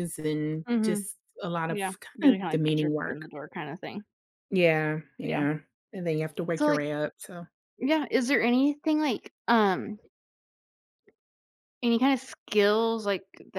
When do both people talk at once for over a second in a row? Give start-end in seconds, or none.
1.7-3.3